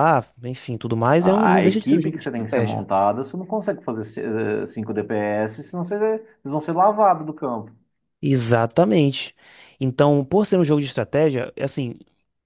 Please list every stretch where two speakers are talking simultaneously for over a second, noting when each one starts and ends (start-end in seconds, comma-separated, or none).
1.2-2.9